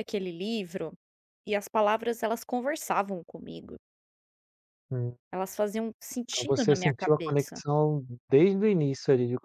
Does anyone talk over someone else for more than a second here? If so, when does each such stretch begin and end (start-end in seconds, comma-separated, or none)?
6.3-7.6